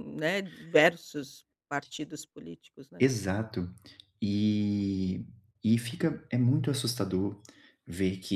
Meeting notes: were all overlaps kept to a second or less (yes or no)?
yes